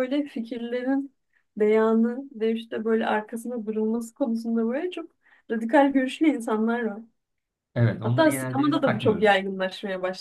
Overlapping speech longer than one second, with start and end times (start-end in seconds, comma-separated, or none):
8.0-9.4